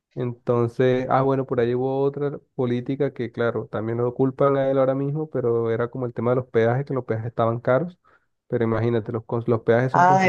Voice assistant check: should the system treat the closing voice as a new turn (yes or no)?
yes